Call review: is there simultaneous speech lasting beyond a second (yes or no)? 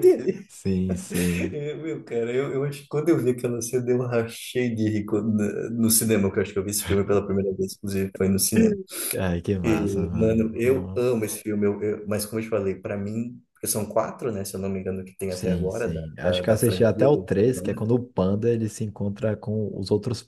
yes